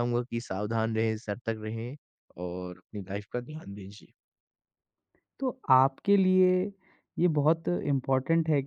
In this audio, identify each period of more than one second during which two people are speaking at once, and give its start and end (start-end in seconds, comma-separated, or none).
none